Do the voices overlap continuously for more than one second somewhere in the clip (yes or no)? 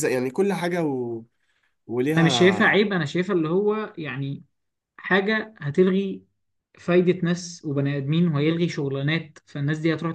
no